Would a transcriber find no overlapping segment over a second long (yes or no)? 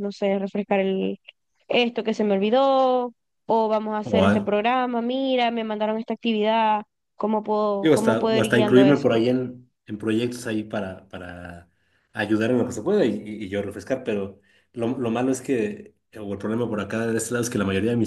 no